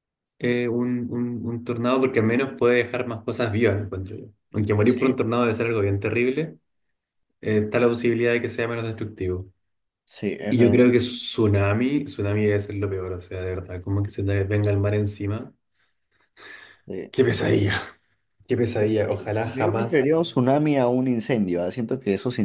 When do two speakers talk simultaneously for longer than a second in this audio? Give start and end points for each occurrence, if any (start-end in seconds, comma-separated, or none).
18.7-20.2